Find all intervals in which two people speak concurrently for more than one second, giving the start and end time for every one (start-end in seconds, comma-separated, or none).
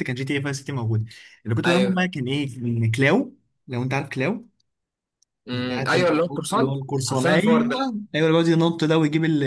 5.5-7.8